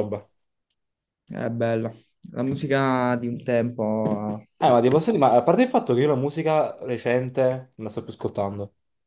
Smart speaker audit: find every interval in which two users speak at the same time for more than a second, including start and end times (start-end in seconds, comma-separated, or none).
none